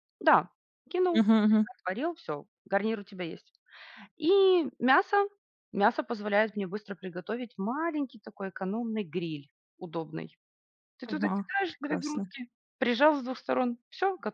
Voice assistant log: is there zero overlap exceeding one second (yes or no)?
no